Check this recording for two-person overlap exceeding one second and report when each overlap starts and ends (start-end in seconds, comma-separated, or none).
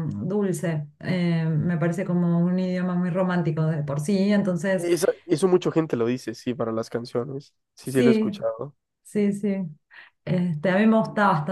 none